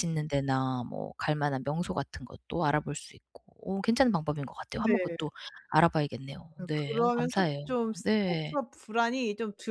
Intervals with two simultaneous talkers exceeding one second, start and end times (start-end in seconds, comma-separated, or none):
6.6-8.6